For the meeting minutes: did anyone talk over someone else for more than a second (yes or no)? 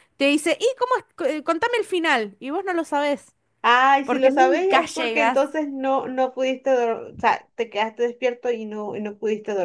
yes